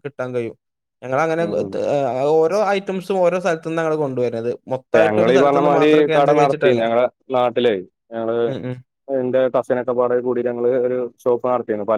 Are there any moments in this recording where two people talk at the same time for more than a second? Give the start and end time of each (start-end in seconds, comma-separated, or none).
5.0-6.8